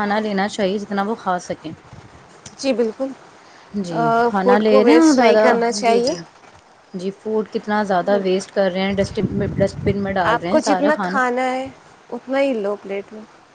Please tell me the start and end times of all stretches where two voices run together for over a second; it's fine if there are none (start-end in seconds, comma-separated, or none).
4.4-6.1